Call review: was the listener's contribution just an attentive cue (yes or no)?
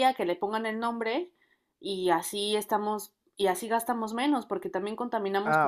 no